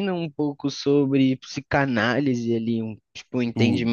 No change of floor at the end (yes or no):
yes